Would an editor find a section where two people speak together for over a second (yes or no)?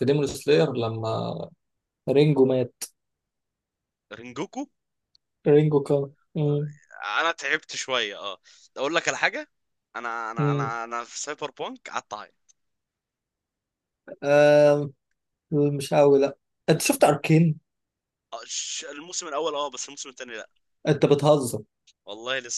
no